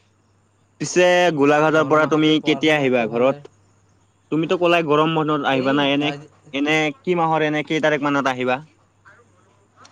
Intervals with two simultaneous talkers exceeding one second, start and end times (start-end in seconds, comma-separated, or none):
1.8-3.3